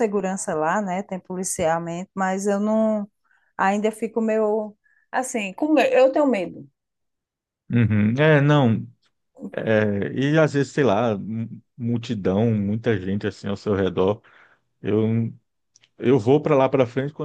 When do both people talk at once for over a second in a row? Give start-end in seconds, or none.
none